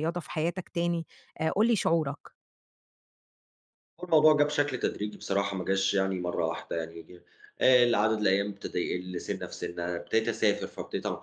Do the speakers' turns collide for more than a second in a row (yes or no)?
no